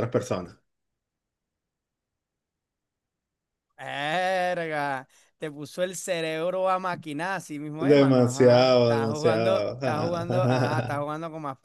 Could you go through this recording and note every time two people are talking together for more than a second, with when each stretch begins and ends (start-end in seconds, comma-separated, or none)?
7.8-11.0